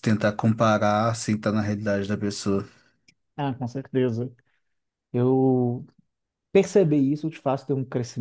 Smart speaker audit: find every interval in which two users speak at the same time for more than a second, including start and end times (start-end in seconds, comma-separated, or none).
none